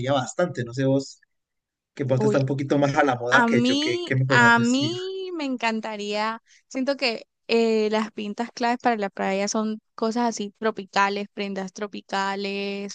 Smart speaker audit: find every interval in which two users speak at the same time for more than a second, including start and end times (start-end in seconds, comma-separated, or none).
3.3-4.9